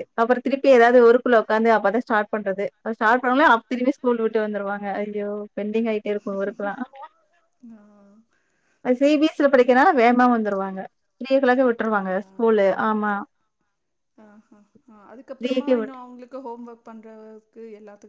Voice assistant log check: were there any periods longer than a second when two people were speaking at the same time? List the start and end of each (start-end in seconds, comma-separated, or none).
none